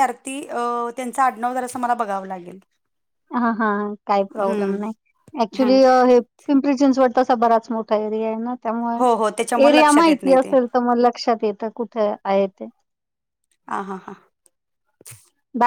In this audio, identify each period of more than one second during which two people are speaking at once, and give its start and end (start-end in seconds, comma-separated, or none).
9.0-10.5